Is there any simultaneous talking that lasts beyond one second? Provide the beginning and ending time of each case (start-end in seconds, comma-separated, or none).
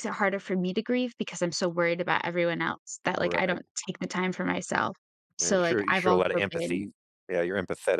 5.4-6.9